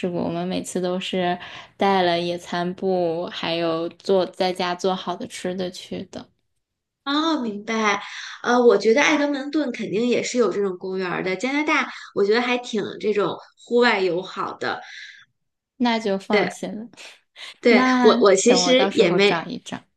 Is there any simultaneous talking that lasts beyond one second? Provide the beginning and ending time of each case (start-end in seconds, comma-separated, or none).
17.7-19.4